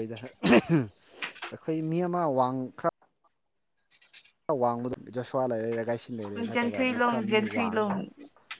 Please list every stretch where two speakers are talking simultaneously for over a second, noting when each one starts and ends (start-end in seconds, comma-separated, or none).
6.5-8.0